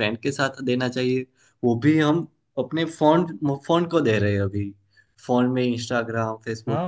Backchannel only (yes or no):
yes